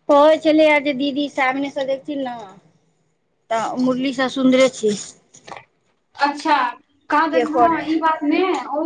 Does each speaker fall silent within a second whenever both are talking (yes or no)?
yes